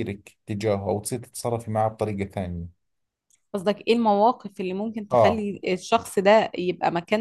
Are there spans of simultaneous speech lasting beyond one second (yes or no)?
no